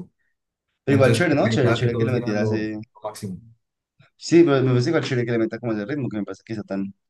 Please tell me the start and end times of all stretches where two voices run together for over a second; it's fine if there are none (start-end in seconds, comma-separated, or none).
0.9-2.8